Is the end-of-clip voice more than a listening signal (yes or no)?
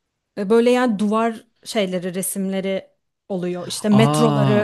yes